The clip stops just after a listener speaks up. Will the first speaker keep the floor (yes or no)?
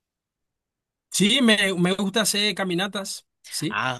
no